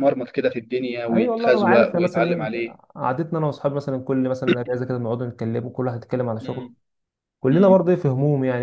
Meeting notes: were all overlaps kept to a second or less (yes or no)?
no